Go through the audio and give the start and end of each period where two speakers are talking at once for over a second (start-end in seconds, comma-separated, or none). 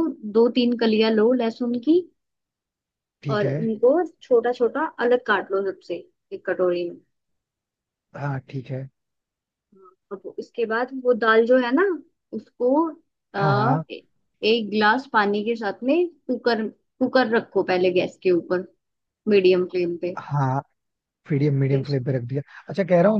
none